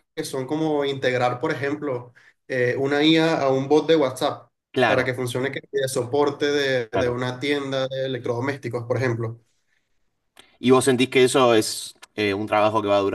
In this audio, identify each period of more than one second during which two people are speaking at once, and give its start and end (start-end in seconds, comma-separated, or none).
none